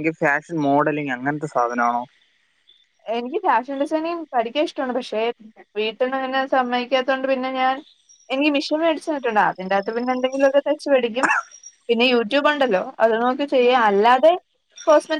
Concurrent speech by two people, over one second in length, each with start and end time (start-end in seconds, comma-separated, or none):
none